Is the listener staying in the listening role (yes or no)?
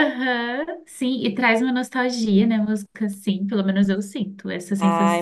no